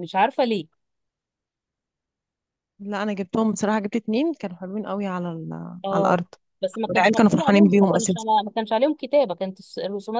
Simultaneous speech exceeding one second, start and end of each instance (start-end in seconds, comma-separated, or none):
6.9-8.2